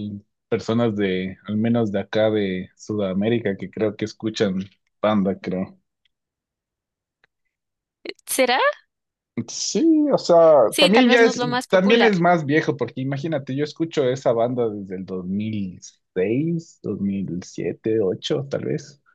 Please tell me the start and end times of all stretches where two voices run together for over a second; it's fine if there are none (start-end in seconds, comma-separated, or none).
10.8-12.1